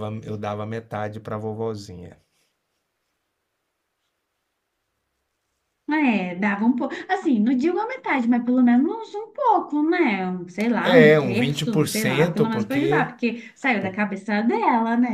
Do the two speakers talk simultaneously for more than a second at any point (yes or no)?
yes